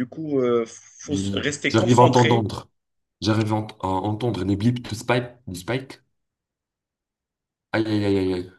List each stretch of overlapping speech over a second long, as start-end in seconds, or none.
1.1-2.5